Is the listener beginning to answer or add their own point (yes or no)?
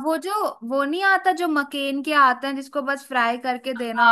yes